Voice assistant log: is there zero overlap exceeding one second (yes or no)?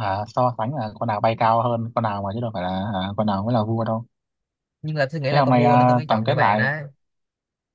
no